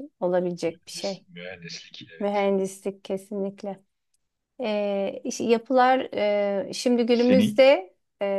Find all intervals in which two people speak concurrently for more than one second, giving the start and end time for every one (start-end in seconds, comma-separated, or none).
none